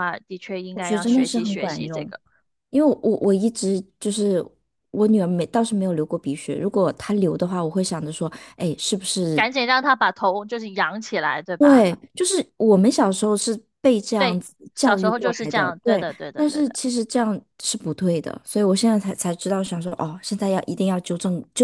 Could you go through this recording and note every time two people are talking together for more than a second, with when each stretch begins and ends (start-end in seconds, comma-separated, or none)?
0.7-2.1, 14.2-16.8